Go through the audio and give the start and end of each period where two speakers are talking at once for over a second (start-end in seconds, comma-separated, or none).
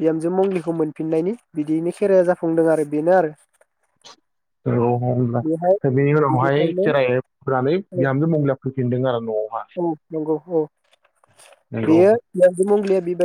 none